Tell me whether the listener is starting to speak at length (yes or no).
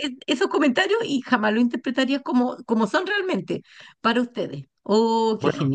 yes